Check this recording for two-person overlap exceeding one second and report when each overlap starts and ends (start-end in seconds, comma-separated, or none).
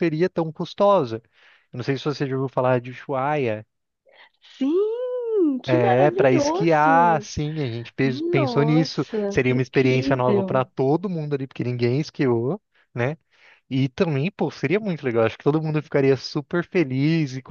5.7-7.3, 8.0-10.6